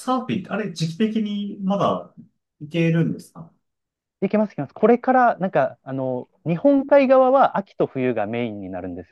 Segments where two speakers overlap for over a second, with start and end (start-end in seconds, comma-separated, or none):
none